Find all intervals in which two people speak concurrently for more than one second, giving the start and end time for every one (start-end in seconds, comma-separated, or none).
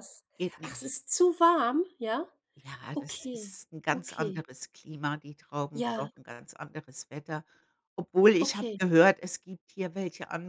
2.9-4.4